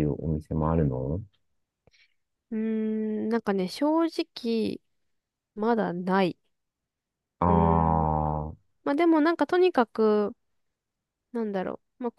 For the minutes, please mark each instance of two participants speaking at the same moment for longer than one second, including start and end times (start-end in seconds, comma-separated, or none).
none